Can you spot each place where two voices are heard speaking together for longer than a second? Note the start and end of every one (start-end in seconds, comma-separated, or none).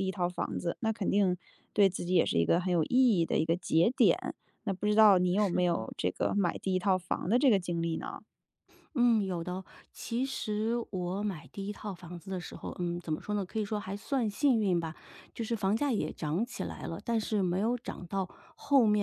none